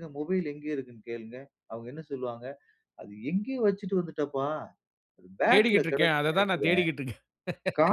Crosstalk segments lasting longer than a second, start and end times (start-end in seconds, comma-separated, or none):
5.5-6.8